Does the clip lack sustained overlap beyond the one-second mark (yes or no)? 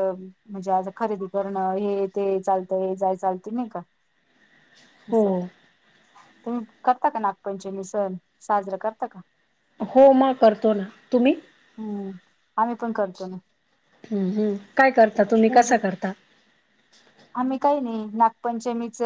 yes